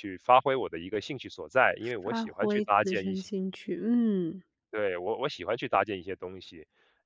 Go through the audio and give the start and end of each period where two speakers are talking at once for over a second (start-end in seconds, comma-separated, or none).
2.0-3.3